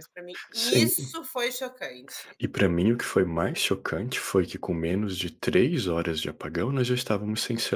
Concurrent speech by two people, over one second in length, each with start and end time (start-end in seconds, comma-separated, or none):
none